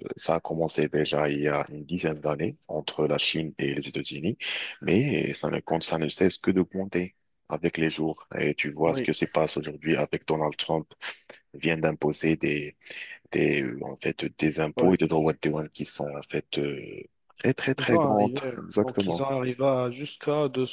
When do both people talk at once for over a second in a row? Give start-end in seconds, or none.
17.8-19.2